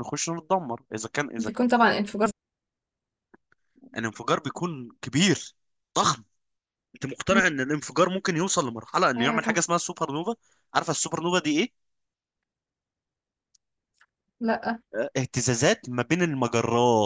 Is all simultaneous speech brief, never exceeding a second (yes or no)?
yes